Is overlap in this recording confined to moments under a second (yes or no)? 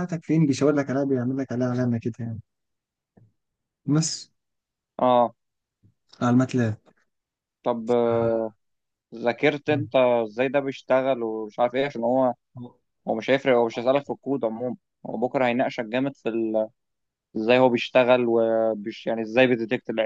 yes